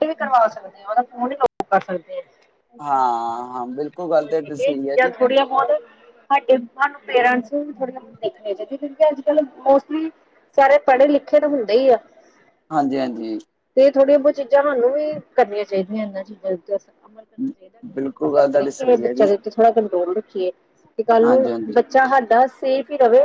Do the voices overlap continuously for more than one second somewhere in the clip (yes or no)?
yes